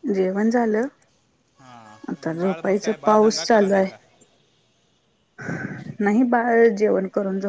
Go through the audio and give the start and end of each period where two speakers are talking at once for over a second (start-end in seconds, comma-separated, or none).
2.1-3.9